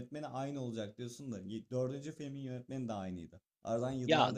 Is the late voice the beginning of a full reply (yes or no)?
yes